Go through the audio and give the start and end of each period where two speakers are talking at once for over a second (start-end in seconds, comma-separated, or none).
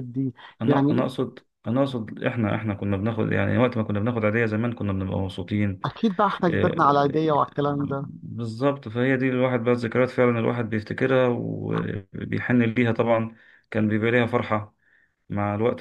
6.5-8.1